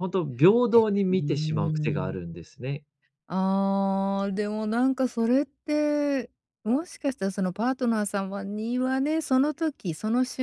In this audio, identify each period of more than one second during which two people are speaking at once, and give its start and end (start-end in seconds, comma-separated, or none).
0.8-2.2